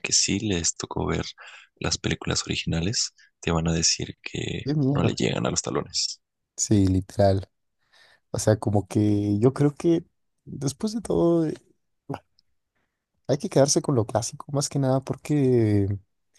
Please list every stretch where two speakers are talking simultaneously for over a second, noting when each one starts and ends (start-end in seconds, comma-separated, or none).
none